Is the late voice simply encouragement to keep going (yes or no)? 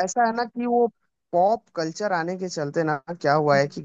yes